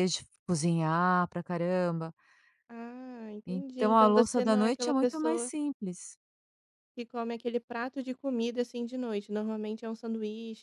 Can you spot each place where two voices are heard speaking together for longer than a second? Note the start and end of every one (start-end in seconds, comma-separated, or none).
3.5-5.5